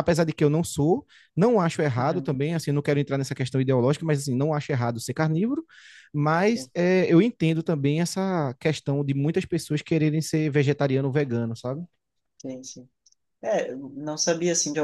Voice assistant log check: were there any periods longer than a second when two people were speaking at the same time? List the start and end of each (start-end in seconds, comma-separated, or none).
none